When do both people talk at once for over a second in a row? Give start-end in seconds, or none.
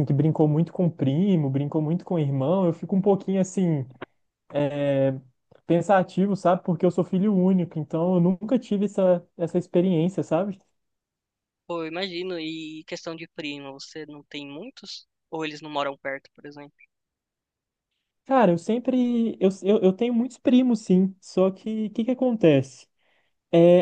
none